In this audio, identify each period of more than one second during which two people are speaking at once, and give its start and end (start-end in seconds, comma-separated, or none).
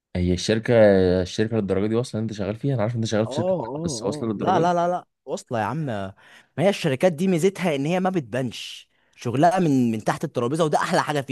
3.2-4.7